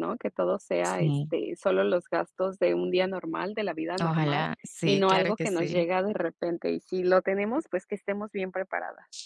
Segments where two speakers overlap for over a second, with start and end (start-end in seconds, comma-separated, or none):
4.0-5.9